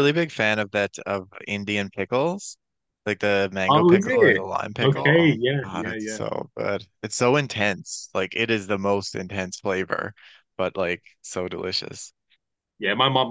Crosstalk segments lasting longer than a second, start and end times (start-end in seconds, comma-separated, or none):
3.7-6.2